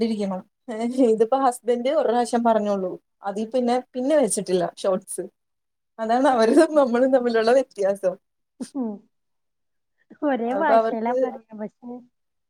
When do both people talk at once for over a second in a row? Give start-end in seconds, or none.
none